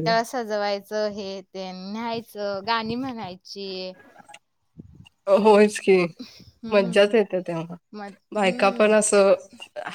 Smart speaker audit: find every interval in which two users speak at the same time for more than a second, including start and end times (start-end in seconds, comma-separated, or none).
none